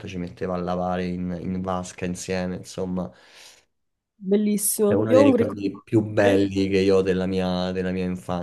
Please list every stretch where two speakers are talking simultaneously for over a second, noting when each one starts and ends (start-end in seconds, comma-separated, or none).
4.8-6.4